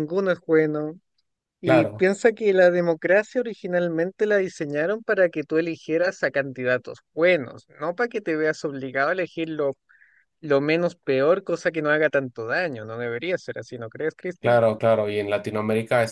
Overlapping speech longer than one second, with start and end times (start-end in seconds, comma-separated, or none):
none